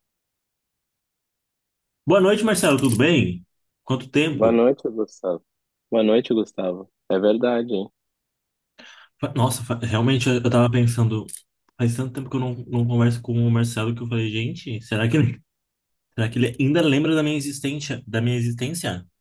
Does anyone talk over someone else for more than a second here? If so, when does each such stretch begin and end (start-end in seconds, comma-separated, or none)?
none